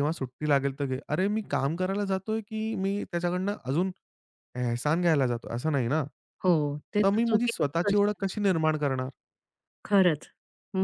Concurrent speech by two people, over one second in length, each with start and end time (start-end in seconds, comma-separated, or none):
7.0-8.5